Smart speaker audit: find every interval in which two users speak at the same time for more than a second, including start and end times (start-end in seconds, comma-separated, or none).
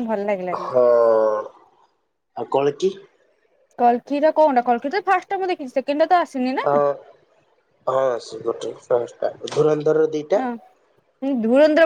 none